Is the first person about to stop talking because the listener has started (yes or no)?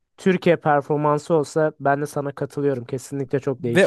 yes